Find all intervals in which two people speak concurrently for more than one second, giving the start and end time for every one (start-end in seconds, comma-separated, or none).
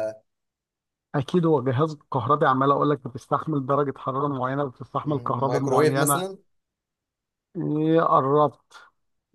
5.0-6.2